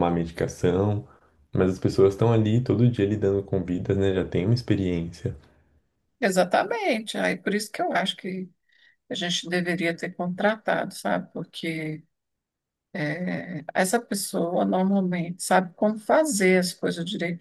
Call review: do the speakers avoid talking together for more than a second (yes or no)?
yes